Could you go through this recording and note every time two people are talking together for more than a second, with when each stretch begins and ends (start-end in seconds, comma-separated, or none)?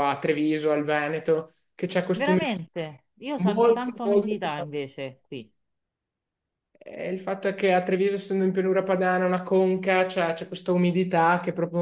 3.4-4.7